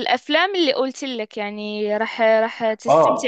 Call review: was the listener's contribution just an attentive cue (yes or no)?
no